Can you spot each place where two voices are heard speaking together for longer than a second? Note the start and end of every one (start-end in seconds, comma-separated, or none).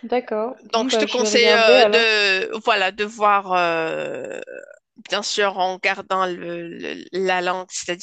0.7-2.0